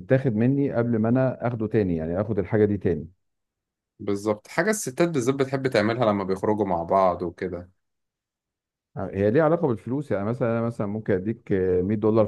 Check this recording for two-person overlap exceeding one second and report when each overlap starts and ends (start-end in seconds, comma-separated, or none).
none